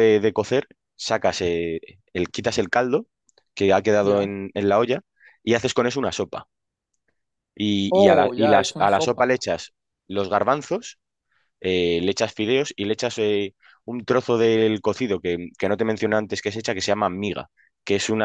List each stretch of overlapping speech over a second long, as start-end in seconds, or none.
8.0-9.3